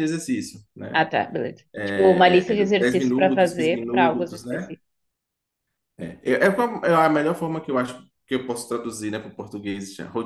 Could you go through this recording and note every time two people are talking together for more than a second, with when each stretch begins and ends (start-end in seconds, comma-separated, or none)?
1.7-4.8